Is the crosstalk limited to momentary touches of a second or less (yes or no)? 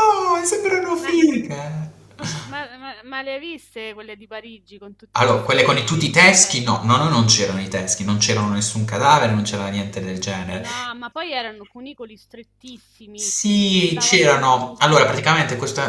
no